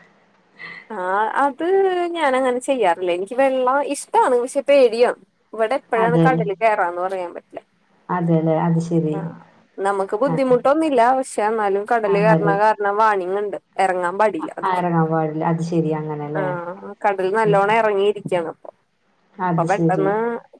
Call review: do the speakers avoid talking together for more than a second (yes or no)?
yes